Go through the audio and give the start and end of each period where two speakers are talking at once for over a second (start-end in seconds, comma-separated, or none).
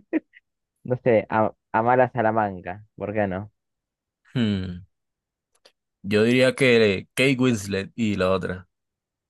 none